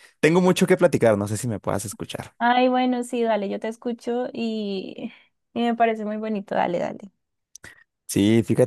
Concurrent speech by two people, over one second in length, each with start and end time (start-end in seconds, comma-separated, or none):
none